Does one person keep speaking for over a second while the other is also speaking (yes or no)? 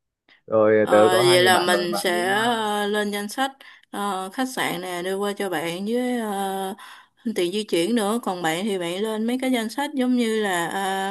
yes